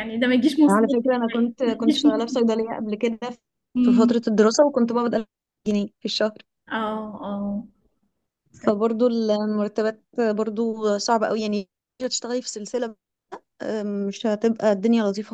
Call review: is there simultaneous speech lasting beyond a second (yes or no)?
yes